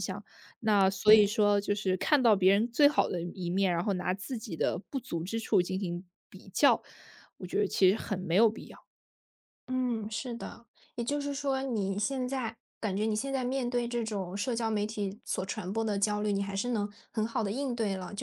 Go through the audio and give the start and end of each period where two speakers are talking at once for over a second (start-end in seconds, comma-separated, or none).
none